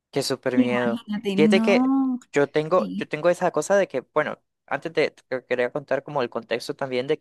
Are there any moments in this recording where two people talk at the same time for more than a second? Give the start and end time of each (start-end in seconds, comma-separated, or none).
0.5-1.9